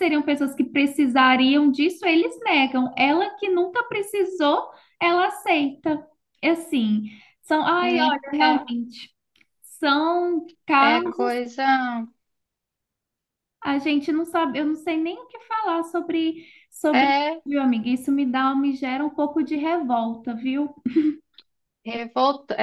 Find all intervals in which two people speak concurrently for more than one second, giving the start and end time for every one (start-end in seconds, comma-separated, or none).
none